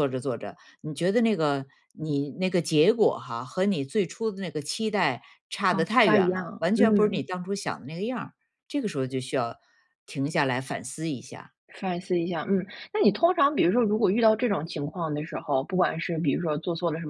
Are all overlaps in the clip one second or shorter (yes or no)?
no